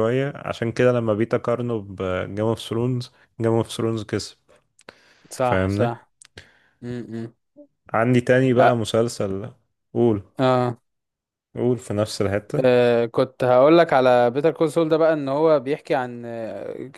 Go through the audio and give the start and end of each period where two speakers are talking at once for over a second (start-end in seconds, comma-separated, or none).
none